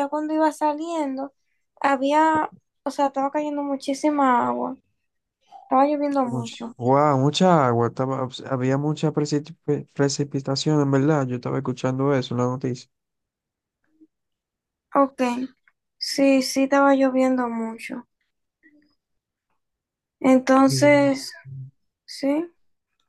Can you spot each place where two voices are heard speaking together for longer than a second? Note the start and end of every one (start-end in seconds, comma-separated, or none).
none